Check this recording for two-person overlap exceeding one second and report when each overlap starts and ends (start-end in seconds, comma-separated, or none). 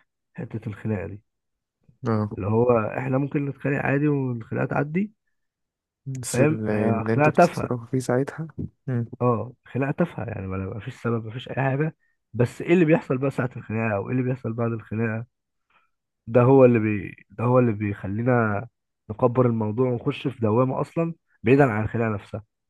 6.3-7.7